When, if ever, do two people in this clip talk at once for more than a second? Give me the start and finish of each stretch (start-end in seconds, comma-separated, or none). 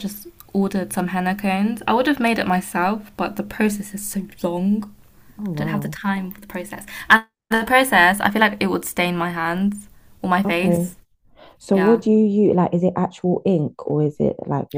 none